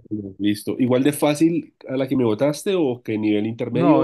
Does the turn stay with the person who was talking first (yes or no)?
no